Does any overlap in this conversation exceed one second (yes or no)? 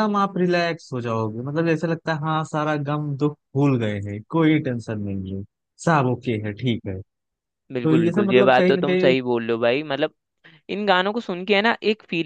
yes